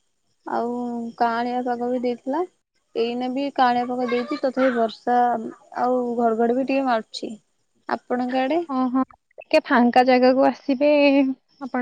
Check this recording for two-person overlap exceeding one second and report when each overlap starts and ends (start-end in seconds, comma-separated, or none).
none